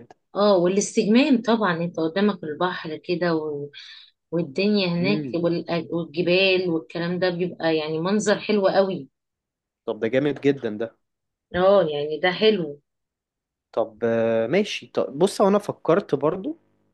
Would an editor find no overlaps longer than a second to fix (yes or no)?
yes